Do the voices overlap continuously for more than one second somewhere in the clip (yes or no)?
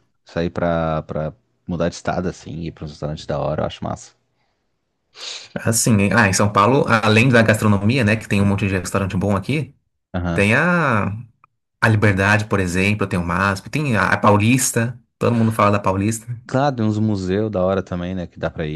no